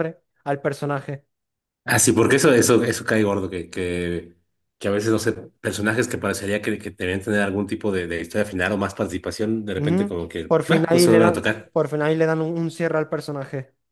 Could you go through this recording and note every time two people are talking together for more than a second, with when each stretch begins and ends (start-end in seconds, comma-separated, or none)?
9.8-11.7